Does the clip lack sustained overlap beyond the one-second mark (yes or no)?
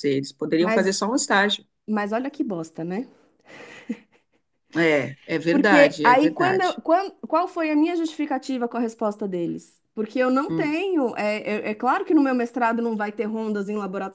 no